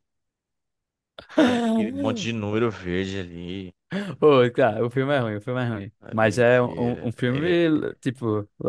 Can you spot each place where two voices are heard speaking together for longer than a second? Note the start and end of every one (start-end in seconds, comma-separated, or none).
6.0-7.6